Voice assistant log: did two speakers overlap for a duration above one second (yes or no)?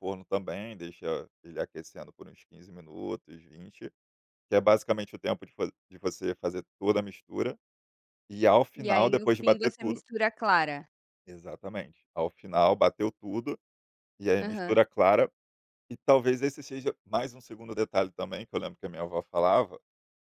yes